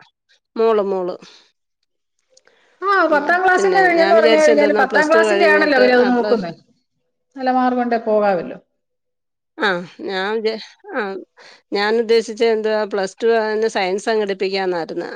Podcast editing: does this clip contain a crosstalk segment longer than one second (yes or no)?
yes